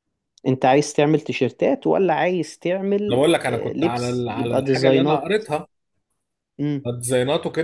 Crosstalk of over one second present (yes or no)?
yes